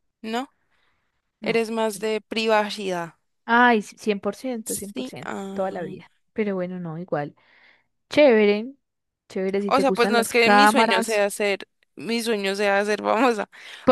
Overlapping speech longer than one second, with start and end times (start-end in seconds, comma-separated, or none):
4.6-6.0, 9.7-11.2